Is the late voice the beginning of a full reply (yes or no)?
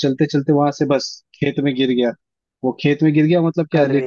no